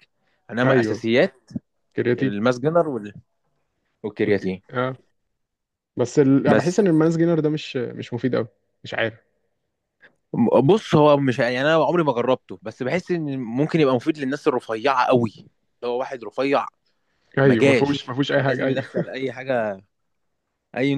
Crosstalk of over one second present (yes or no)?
yes